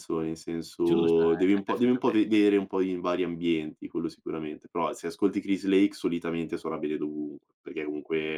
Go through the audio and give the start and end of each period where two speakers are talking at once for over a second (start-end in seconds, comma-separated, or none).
0.8-2.4